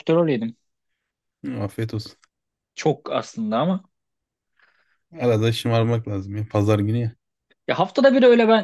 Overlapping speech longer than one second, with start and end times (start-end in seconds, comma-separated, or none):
none